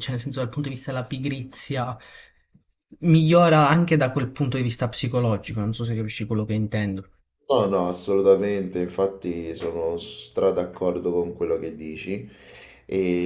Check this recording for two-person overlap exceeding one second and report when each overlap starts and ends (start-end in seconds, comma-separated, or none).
none